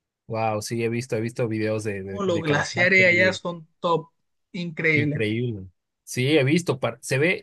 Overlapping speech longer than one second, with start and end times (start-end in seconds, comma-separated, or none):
2.0-3.4